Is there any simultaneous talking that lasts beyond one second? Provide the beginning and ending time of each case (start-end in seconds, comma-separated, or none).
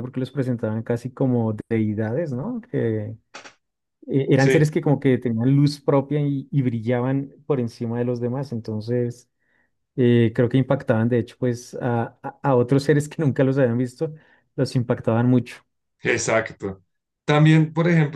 none